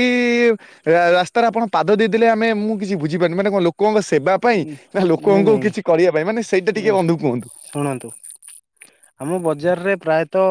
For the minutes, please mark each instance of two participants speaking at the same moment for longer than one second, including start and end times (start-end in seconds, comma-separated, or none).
5.3-6.9